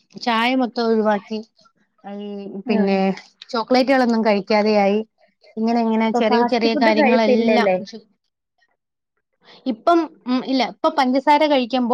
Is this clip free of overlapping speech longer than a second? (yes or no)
no